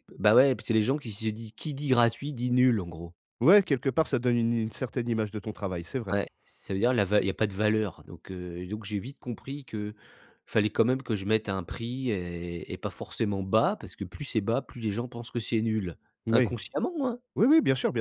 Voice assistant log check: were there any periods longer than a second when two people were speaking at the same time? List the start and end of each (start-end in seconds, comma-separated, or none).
none